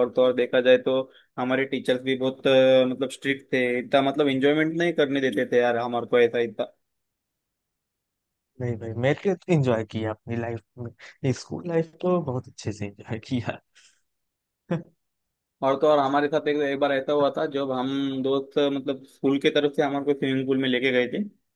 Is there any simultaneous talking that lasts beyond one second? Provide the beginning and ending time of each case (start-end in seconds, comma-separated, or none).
none